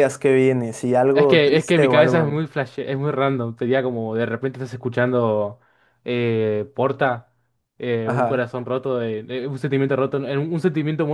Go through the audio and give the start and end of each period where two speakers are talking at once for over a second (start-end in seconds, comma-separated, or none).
1.1-2.4